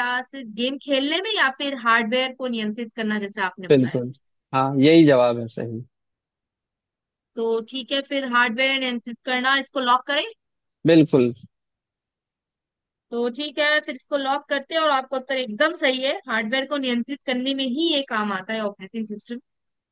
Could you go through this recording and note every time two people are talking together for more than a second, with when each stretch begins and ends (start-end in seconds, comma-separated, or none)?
none